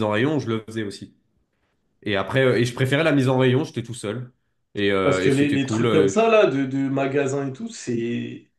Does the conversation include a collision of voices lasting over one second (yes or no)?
yes